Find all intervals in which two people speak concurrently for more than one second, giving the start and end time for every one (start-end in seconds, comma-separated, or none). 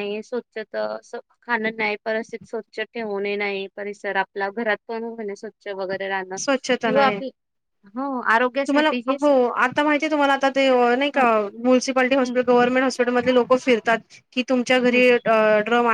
none